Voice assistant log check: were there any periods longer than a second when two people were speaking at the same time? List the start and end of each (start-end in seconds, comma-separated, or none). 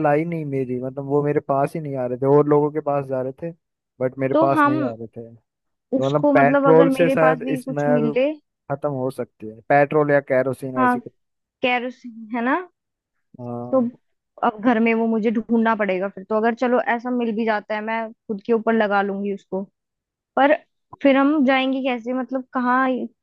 6.0-8.1